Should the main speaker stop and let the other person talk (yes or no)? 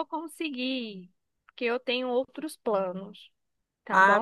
yes